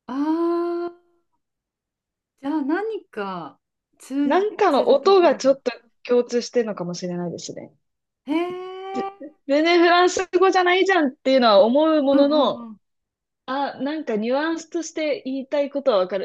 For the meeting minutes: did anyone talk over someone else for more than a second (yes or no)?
yes